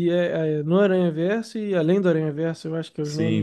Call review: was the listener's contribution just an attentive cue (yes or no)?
no